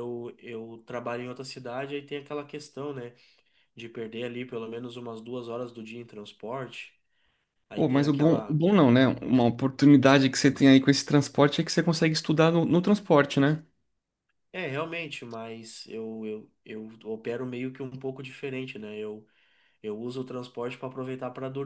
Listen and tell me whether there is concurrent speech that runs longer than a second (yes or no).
yes